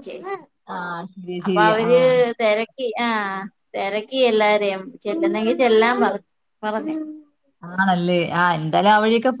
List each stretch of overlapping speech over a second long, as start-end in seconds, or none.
none